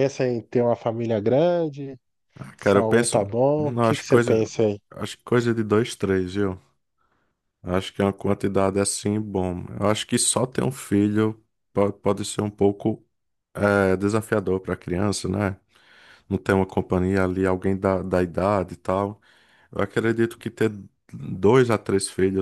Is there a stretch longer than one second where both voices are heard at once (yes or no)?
yes